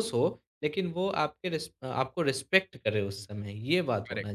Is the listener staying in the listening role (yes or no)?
no